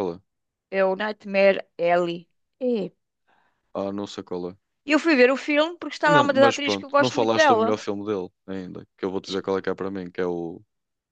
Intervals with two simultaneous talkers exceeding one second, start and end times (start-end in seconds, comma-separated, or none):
6.1-7.7